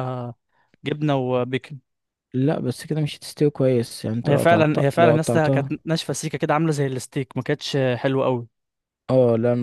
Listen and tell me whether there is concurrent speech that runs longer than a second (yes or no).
yes